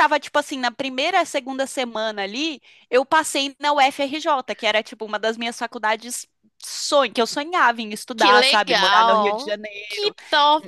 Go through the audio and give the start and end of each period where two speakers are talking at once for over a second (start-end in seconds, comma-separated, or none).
8.1-10.1